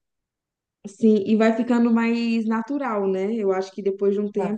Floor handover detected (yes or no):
no